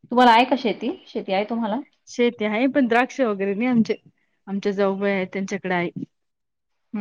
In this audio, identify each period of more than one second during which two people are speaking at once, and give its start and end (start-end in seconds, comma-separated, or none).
none